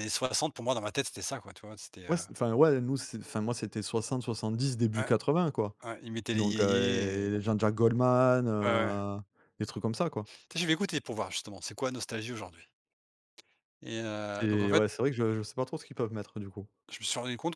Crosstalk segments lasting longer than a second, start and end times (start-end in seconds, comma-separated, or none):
6.3-7.5